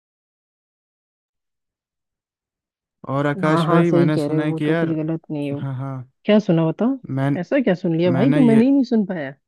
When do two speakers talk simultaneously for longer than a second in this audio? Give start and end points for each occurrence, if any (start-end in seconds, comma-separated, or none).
3.5-5.0